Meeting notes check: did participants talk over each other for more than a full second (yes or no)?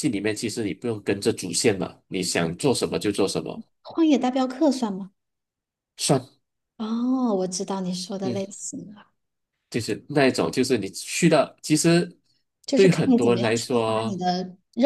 yes